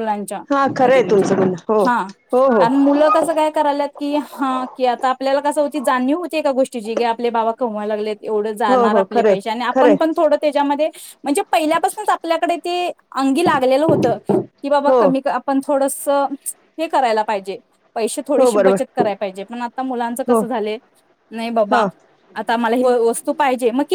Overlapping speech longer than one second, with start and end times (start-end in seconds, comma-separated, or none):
8.7-10.2